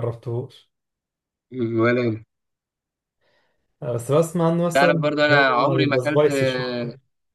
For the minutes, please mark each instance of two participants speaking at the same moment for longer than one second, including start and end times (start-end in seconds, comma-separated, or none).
4.7-6.2